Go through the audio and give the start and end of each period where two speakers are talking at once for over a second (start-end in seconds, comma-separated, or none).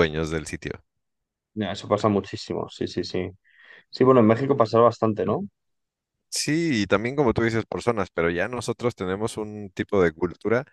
none